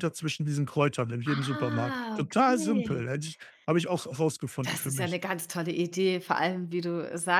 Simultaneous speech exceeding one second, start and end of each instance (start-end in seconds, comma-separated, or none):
1.2-3.0